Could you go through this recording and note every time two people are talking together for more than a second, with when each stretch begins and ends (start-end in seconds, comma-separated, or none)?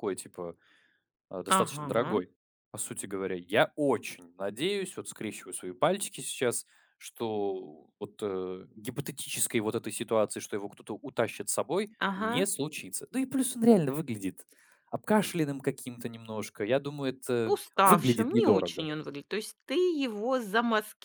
17.4-18.9